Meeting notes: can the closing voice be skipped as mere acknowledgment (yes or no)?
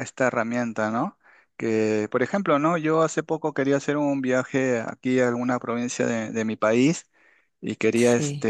yes